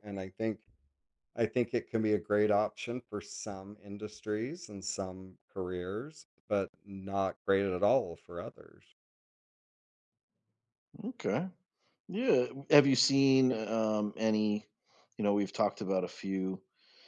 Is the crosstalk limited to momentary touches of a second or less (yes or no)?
yes